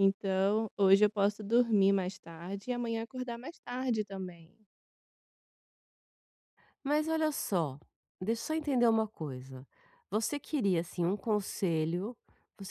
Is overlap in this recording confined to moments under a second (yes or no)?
yes